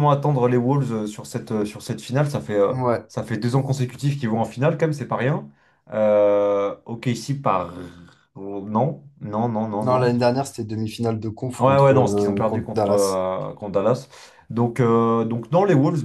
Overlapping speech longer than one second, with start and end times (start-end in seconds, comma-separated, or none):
11.6-13.2